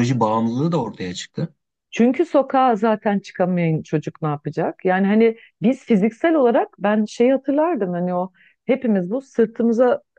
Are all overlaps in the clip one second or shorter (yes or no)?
yes